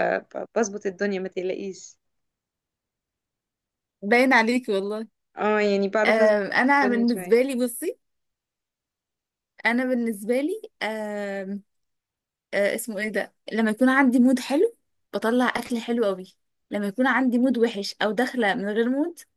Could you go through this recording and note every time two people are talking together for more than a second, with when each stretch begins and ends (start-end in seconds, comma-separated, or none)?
none